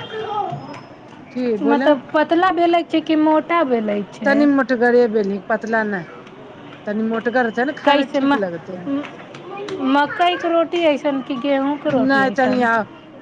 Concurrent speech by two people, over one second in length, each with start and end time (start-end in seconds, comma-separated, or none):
none